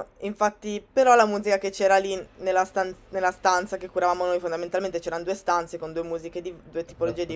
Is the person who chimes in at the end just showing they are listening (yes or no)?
yes